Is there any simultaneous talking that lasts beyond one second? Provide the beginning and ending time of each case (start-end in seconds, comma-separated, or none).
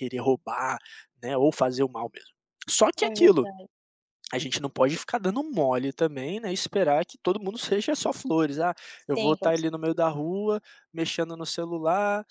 9.0-10.2